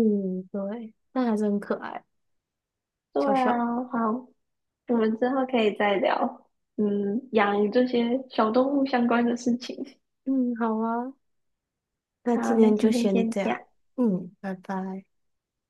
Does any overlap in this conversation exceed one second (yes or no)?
yes